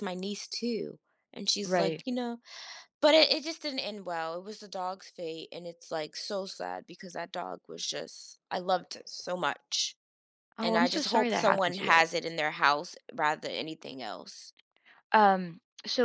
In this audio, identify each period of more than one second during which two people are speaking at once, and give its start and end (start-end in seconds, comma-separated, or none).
10.6-12.0